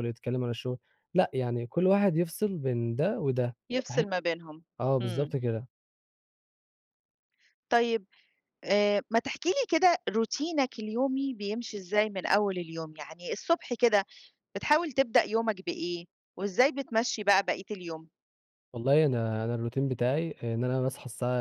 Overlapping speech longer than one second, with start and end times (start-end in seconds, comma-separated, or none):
none